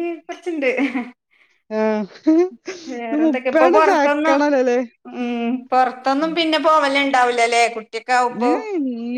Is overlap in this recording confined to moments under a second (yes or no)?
no